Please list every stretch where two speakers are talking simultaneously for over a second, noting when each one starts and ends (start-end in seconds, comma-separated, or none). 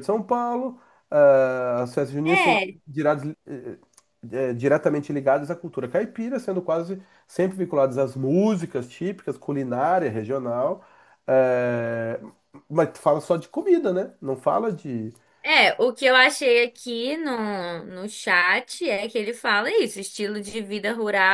none